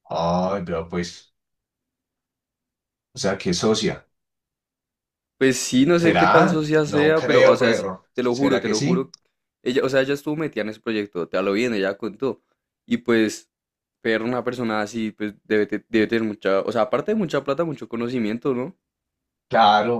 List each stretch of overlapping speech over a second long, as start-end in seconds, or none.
5.9-9.1